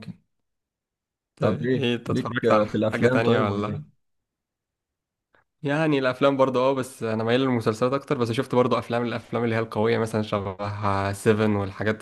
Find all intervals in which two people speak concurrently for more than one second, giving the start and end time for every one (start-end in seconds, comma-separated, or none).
1.4-3.9